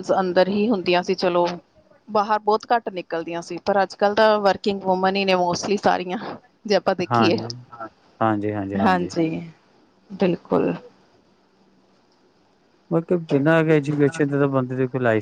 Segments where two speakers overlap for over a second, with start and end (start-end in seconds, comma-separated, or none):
none